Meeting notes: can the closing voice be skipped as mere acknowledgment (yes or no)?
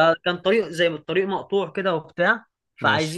yes